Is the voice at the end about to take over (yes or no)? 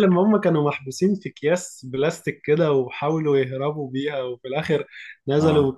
no